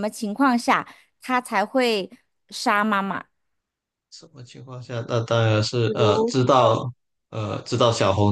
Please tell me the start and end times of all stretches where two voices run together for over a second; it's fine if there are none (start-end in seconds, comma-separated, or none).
none